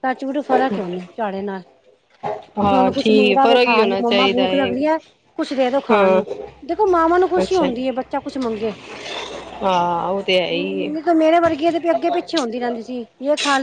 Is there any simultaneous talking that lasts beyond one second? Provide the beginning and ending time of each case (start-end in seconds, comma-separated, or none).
2.7-4.7